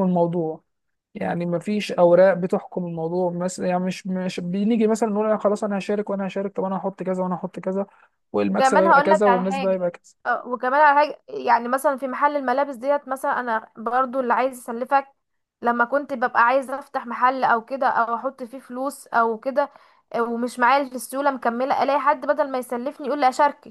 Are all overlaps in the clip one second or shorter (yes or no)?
no